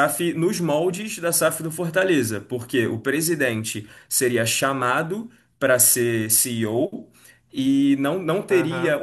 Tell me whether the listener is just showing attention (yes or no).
yes